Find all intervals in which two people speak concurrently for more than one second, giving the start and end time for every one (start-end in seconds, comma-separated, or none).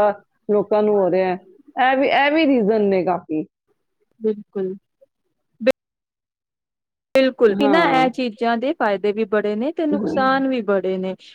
none